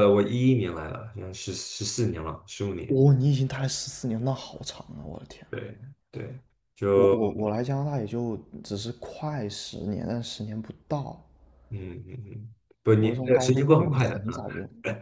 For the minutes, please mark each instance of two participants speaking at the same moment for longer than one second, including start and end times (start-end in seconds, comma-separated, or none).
13.0-14.4